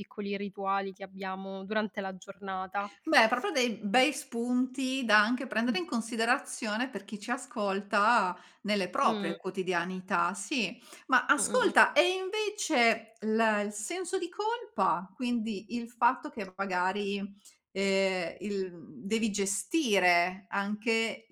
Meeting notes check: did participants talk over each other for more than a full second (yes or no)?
no